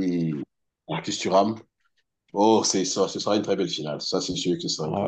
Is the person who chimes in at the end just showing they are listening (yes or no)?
no